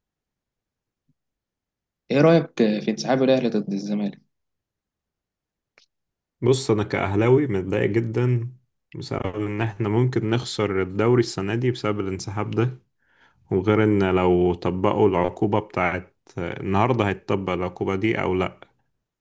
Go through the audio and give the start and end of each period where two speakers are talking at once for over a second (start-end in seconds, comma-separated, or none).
none